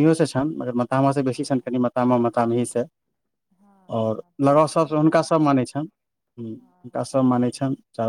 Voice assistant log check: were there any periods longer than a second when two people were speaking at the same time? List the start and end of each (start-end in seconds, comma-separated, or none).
3.9-5.8